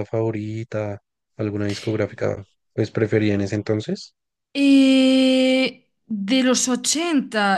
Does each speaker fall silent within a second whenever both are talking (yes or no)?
yes